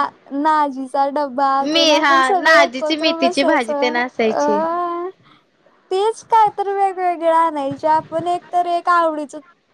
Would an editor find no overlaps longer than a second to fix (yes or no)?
no